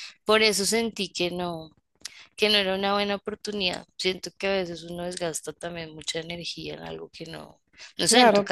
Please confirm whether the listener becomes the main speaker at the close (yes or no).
no